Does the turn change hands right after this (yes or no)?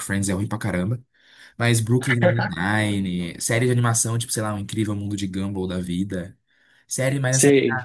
no